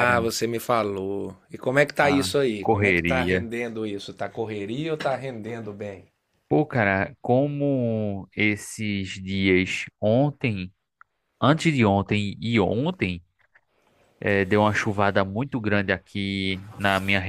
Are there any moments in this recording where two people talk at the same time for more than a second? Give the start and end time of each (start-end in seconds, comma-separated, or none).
2.0-3.5